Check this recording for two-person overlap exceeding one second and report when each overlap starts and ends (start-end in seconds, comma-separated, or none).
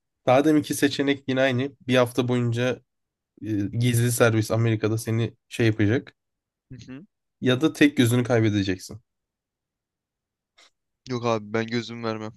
none